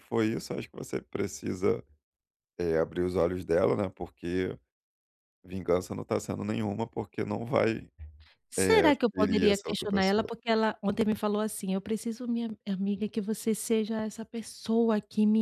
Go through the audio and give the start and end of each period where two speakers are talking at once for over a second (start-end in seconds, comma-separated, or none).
8.6-10.3